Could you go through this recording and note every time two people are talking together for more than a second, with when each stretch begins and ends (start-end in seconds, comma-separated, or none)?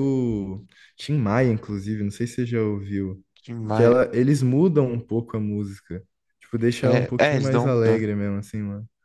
6.8-8.0